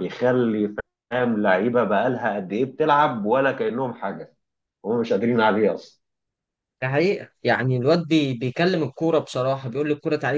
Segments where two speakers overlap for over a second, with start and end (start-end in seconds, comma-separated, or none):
none